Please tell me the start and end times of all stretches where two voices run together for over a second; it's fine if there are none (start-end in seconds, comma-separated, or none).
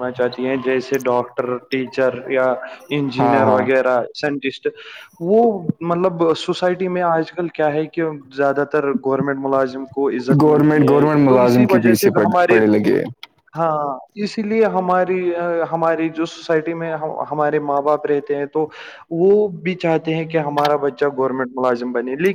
10.4-12.6